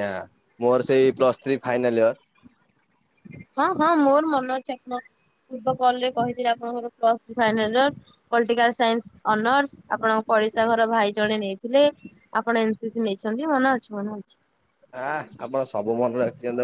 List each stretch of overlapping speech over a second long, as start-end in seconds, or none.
none